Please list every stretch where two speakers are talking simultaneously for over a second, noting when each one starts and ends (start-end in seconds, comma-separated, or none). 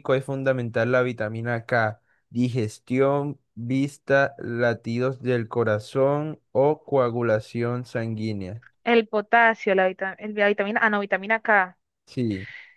none